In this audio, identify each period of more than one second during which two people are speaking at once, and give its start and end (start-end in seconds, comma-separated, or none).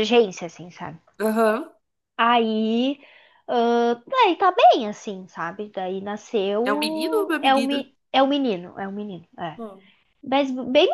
6.6-7.9